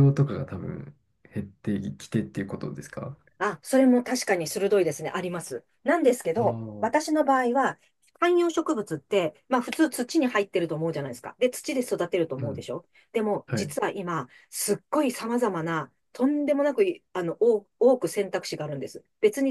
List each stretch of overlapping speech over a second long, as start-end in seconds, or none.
none